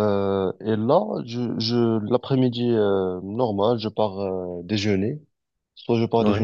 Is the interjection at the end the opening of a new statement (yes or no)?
no